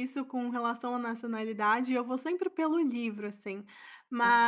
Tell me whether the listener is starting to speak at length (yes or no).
no